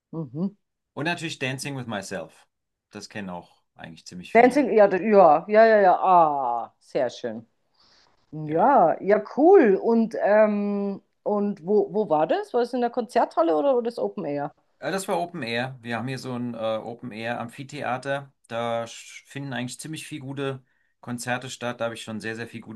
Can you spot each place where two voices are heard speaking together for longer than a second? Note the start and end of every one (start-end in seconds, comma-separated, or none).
none